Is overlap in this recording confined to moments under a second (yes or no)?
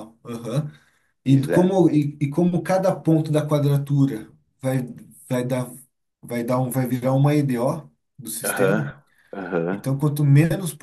yes